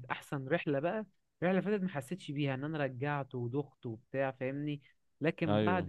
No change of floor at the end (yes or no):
yes